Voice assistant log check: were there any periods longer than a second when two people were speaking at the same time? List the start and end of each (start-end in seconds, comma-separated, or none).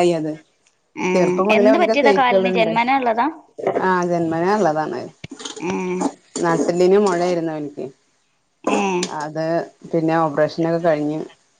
1.1-2.7